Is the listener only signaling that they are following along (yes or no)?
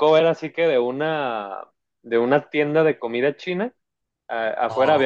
yes